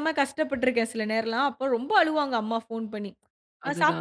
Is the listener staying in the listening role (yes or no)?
yes